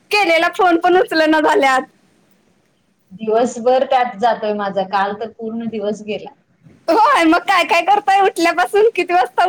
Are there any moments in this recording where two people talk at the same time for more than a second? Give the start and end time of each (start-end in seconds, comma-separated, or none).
none